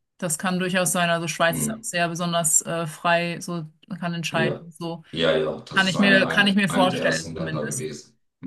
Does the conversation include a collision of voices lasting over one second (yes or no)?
yes